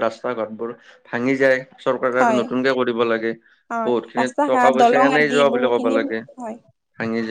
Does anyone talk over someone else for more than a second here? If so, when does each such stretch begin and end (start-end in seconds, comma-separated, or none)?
3.9-6.0